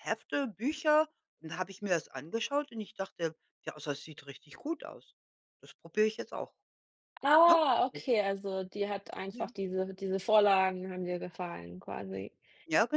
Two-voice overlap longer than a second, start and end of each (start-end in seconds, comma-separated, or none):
none